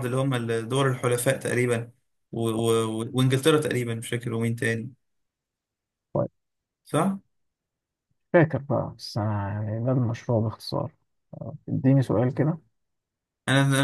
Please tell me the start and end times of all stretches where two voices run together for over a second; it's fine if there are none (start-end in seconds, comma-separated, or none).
none